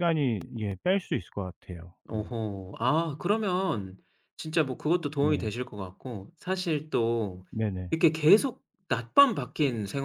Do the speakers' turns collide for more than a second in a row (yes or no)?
no